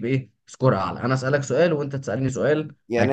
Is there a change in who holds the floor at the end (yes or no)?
yes